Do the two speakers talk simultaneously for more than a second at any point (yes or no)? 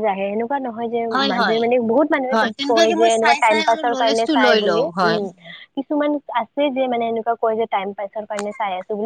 yes